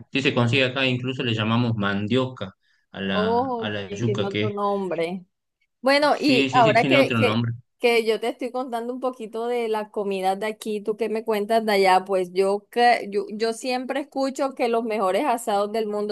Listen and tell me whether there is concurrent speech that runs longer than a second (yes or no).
yes